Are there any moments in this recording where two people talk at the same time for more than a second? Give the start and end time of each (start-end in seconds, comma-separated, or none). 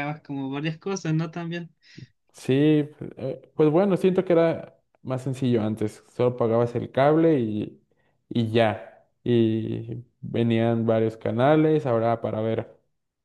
none